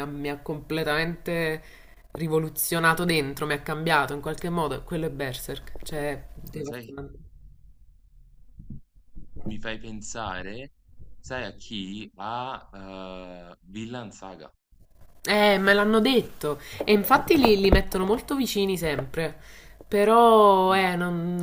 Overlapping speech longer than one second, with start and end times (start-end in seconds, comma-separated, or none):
none